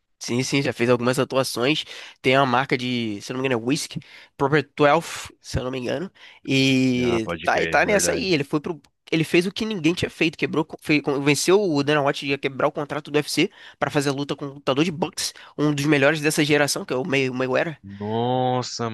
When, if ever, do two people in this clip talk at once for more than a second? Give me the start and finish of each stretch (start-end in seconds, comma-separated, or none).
7.0-8.3